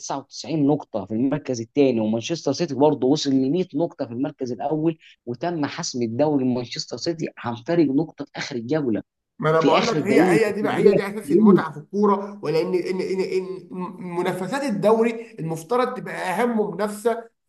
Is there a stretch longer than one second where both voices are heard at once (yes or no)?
yes